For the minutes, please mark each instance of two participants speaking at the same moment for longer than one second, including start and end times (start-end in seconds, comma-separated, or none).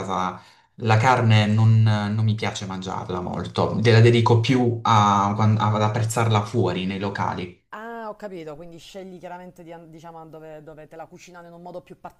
none